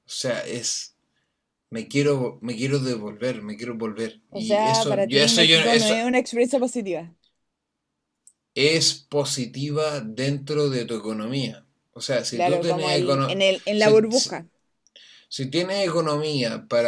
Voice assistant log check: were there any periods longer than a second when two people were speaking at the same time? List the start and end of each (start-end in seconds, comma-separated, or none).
4.3-5.9, 12.3-14.4